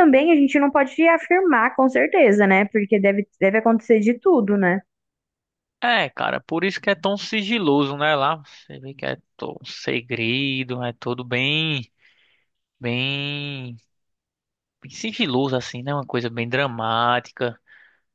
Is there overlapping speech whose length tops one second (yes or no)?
no